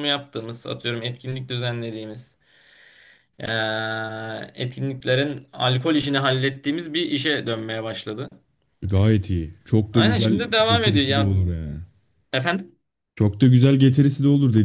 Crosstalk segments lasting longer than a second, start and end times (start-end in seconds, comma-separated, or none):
9.9-11.3